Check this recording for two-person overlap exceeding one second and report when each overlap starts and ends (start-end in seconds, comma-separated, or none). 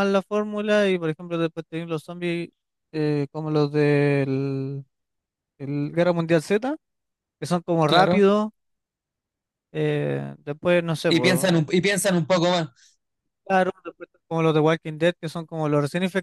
none